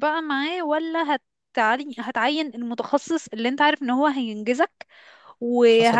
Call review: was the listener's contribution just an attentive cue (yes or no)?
no